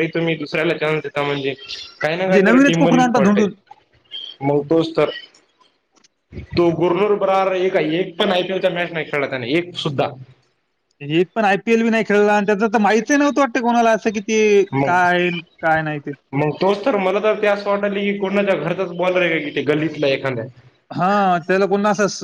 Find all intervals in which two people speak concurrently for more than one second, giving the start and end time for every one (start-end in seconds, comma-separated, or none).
2.1-3.4